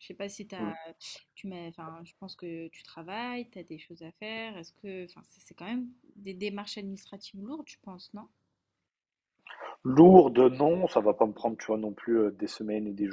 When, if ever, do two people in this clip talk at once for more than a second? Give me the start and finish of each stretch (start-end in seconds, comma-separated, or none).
none